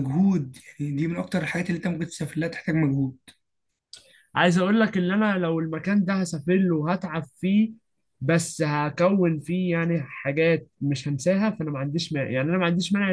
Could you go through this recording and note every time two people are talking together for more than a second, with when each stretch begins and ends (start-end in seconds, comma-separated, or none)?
none